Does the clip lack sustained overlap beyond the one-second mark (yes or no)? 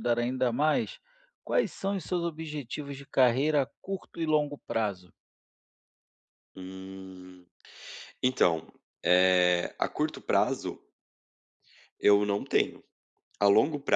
yes